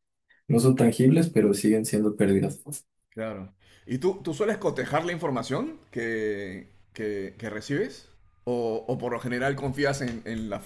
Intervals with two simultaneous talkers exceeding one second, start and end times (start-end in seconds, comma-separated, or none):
none